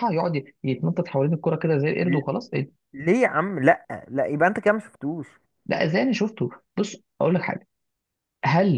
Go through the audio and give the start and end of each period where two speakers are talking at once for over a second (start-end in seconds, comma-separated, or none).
none